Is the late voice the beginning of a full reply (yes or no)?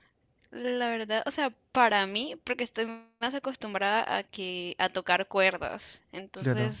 no